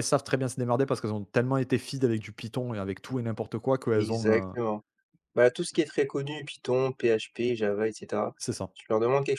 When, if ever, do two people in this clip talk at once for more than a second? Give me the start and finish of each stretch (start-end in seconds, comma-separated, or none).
none